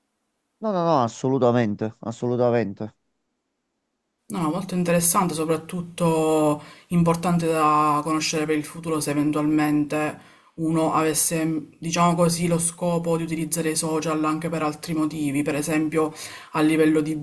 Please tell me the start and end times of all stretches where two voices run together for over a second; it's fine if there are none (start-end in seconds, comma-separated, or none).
none